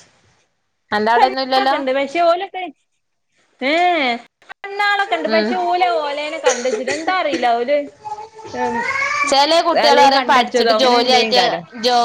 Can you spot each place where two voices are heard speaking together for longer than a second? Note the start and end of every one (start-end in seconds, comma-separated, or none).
9.9-11.4